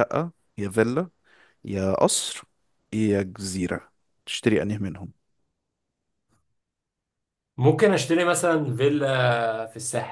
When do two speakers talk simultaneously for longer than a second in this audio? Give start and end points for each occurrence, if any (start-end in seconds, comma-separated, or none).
none